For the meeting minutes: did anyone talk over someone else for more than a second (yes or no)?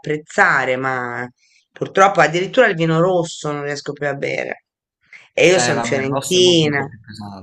yes